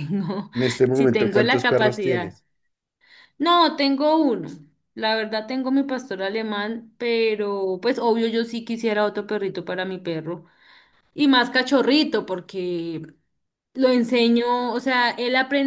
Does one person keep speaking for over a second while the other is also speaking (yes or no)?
yes